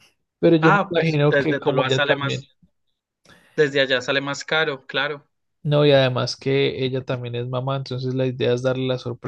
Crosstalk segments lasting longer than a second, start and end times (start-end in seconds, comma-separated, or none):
0.6-2.4